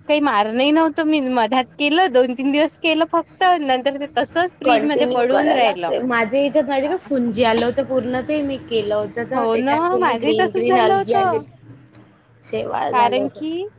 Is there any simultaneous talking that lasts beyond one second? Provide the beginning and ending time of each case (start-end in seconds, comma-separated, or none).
9.3-11.4